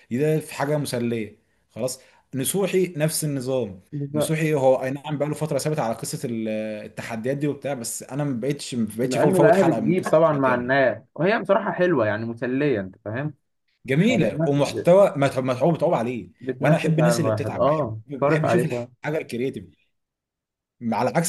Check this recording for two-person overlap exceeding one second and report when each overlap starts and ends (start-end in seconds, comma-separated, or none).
9.0-10.8, 16.4-18.9